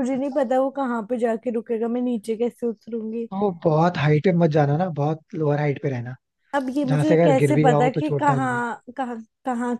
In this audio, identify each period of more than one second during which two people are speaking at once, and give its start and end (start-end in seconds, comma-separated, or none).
6.8-8.6